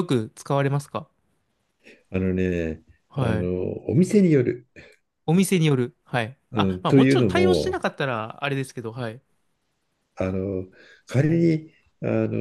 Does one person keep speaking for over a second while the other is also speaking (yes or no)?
yes